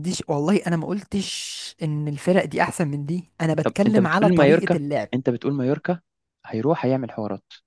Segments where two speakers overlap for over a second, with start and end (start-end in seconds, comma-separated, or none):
3.6-5.1